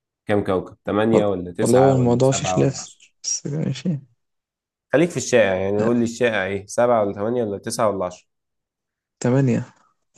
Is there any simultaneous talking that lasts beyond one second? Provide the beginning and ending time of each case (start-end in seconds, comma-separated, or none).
1.1-3.1